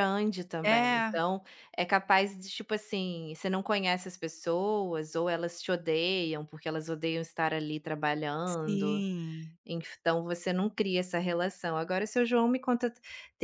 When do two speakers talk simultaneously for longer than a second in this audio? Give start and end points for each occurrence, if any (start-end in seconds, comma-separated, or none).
none